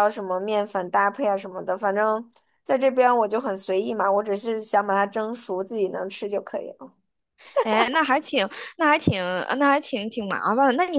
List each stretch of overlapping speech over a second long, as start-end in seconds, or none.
none